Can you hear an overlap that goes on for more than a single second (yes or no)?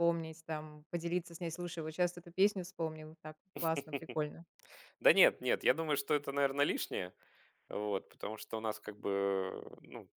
no